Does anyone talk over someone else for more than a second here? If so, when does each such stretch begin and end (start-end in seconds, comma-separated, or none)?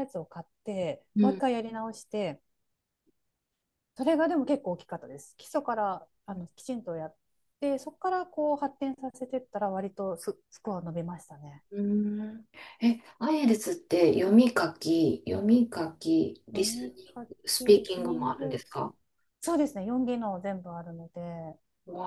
16.5-18.6